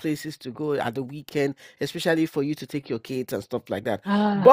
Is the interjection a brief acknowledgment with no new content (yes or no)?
yes